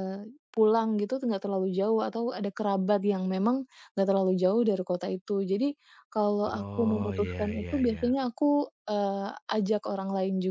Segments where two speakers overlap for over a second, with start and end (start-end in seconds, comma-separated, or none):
6.5-8.1